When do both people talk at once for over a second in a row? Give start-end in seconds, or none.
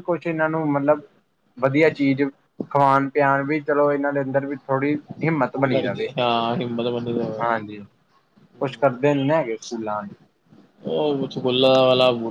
none